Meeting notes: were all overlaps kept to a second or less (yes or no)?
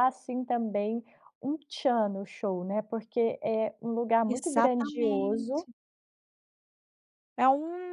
no